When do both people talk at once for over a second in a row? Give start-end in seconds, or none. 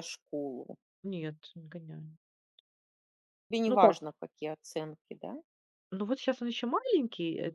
none